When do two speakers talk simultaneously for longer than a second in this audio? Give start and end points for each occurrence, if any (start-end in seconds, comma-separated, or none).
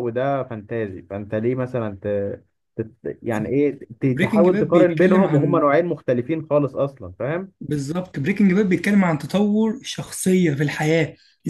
4.0-5.7